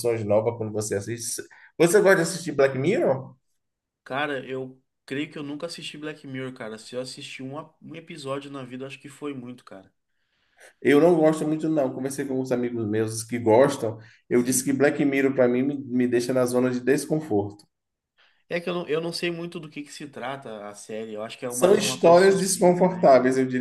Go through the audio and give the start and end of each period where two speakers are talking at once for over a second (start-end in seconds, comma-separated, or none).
21.5-23.1